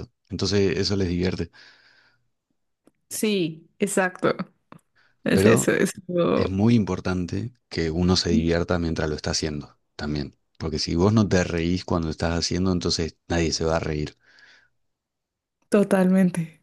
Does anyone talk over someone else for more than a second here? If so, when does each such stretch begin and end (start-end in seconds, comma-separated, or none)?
none